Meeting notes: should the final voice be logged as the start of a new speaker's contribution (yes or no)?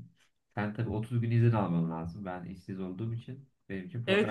yes